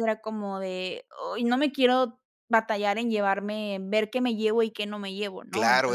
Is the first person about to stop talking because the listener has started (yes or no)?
yes